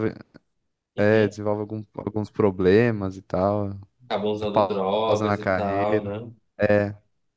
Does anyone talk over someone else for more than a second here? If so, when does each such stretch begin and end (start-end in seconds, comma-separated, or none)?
4.5-6.1